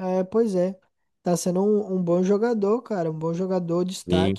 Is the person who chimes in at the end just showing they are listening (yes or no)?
no